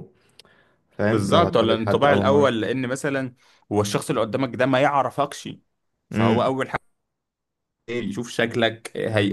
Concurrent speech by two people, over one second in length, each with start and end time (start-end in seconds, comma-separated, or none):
1.1-2.5